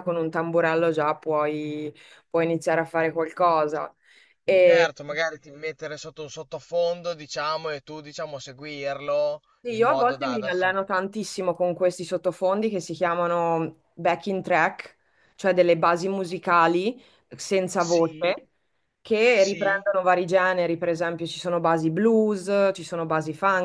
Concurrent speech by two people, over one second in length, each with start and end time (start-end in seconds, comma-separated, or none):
9.6-10.8